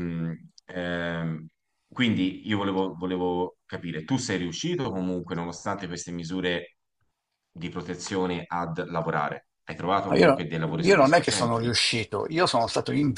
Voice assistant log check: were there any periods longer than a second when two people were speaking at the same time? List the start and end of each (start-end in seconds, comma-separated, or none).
10.1-11.8